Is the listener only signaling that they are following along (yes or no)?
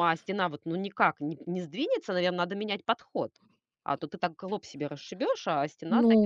no